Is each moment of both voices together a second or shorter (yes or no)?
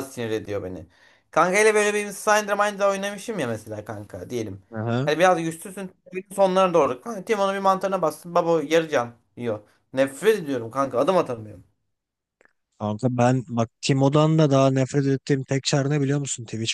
yes